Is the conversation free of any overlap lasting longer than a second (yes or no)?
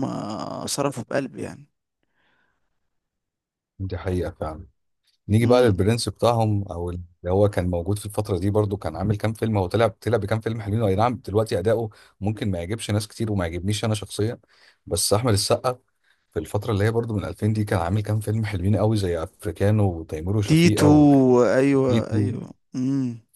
yes